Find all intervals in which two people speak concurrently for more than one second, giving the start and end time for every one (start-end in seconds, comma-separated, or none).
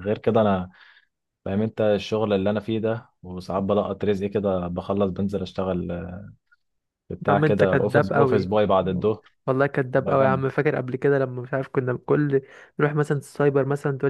7.3-8.5